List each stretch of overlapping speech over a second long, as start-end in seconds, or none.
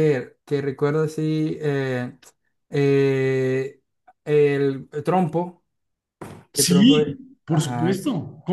6.5-8.0